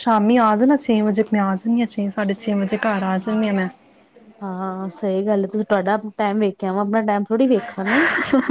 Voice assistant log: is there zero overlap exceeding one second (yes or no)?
yes